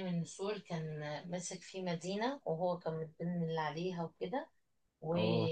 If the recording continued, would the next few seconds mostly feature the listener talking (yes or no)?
no